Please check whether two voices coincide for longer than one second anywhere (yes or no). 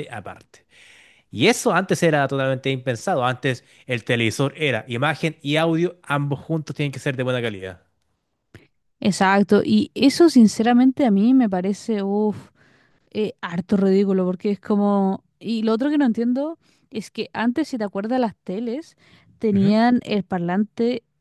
no